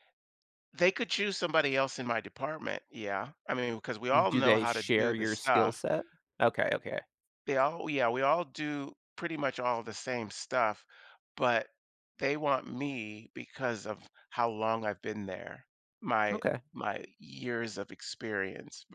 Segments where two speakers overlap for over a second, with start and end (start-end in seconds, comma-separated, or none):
4.3-5.8